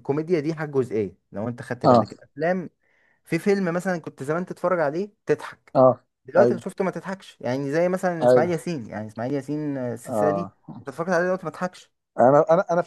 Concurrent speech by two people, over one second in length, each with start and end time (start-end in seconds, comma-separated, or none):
none